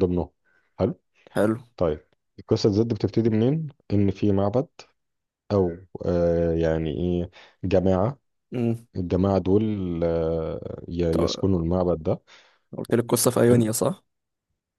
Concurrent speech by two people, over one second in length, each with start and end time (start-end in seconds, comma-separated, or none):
none